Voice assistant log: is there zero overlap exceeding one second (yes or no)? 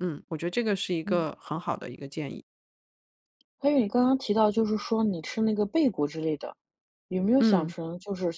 yes